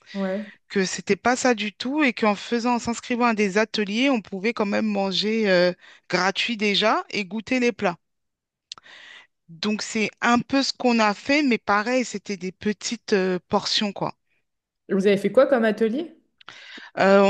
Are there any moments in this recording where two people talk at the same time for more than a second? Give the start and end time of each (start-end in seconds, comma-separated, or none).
none